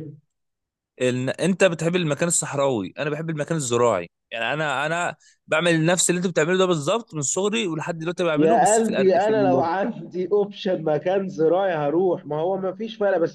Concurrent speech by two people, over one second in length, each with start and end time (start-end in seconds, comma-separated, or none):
8.3-9.6